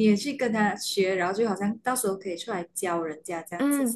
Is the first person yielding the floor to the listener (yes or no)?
yes